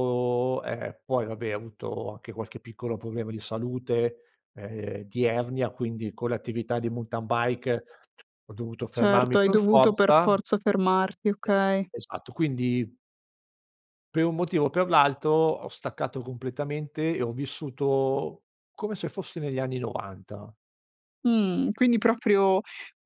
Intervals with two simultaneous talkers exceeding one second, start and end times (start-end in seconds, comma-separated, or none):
8.9-10.3